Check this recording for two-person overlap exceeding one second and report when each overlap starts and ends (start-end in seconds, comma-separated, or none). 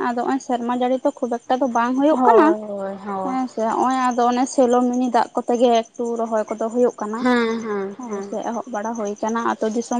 none